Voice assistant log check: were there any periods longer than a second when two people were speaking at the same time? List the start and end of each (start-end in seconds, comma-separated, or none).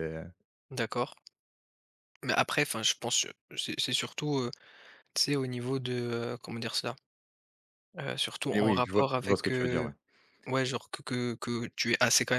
8.5-9.9